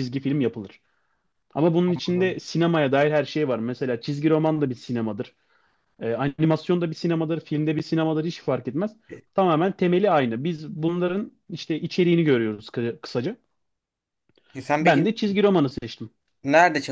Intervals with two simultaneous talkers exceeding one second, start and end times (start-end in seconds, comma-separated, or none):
none